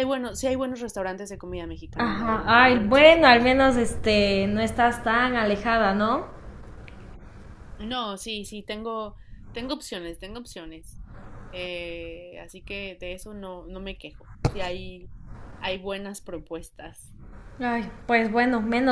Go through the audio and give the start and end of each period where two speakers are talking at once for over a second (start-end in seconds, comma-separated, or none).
2.0-3.4